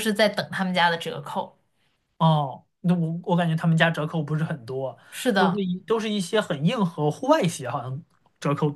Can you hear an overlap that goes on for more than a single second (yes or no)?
no